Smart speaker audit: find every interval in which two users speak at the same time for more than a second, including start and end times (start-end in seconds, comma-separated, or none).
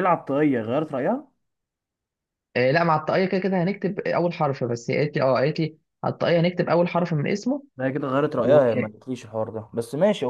none